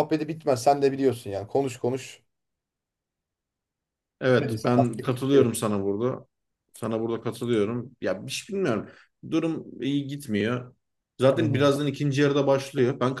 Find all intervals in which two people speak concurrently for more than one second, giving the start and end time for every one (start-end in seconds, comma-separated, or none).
4.3-5.6